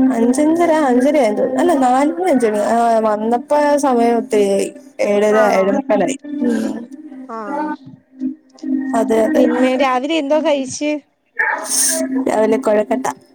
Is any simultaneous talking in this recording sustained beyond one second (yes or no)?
no